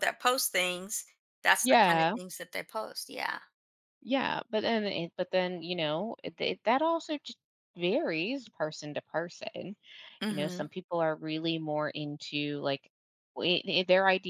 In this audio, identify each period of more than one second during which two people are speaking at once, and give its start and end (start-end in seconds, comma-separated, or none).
none